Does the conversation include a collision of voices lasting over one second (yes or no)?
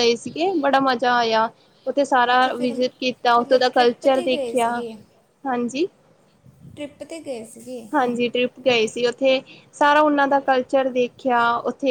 yes